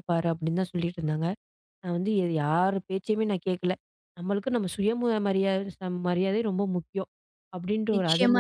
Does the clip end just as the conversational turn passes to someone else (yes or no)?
yes